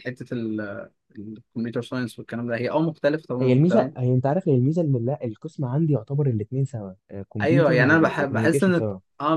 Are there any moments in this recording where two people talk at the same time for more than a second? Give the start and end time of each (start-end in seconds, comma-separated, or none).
7.4-8.8